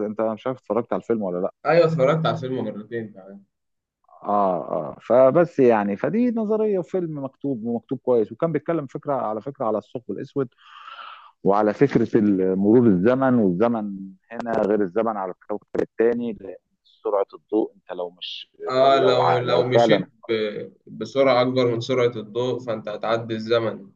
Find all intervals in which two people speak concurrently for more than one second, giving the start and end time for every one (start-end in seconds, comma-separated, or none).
18.7-20.1